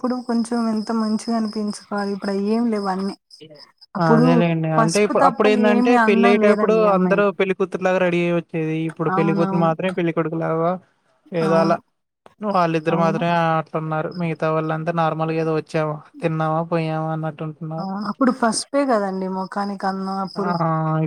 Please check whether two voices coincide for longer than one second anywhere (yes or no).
yes